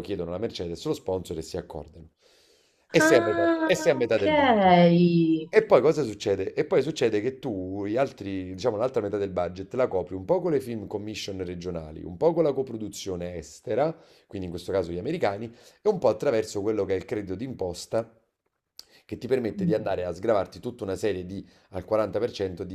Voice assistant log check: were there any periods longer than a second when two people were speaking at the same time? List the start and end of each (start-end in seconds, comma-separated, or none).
3.0-4.3